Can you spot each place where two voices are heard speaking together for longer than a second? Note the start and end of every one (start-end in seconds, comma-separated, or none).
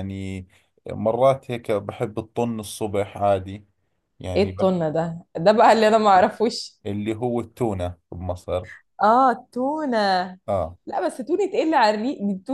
none